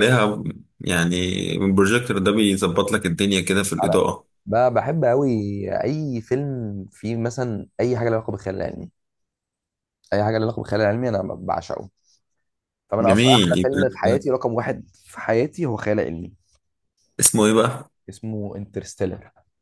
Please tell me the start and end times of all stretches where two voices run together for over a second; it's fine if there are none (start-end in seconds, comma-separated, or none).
13.0-14.2